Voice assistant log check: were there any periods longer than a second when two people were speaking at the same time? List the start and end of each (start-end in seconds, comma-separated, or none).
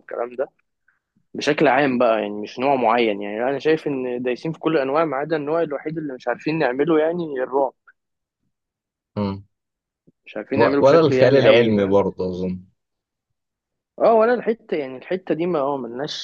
10.6-12.0